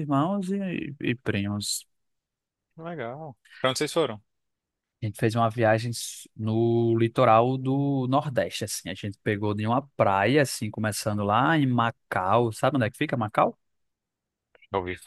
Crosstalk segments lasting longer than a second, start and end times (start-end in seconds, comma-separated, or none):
none